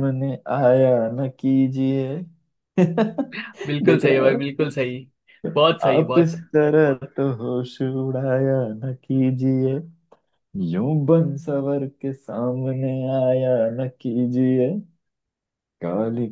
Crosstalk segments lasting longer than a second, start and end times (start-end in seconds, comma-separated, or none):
none